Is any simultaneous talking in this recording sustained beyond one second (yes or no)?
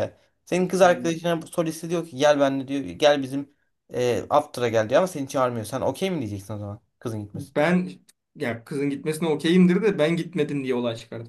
no